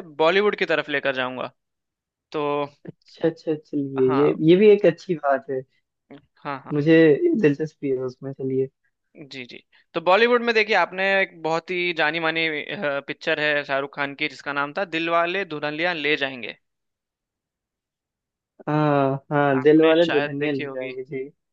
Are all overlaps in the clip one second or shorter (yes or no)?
no